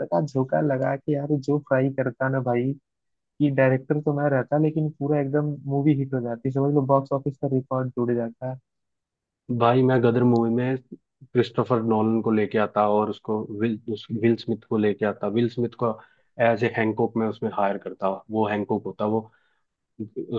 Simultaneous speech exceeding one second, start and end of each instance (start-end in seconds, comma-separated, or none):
none